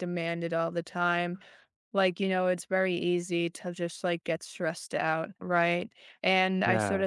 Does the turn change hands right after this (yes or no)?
no